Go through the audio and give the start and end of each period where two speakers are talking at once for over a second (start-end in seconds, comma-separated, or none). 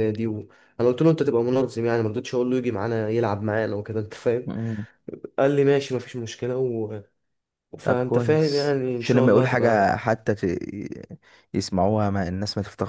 7.8-9.9